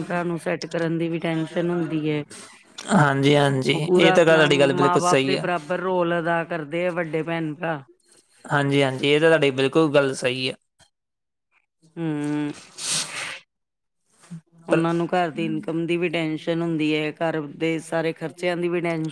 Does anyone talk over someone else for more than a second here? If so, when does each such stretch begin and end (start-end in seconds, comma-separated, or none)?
3.7-5.5